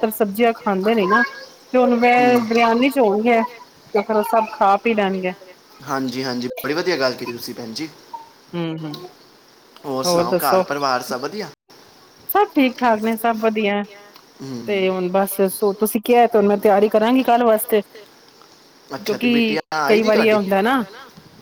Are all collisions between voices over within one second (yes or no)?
no